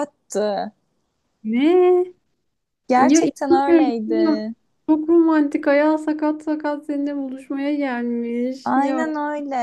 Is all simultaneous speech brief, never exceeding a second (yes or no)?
no